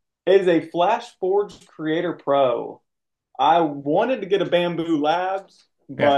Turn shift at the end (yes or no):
no